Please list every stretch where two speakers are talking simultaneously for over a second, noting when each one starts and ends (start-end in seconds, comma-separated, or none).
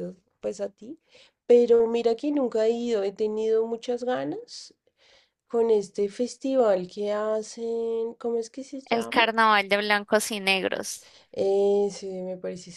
none